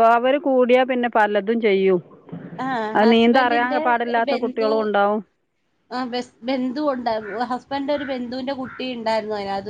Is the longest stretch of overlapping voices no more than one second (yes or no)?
no